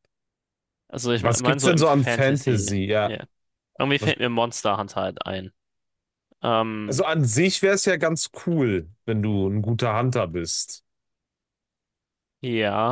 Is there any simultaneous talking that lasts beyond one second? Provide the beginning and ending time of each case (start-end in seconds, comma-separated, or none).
1.1-3.1